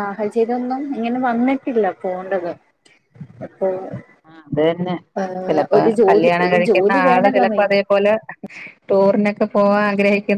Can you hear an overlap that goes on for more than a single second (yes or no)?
yes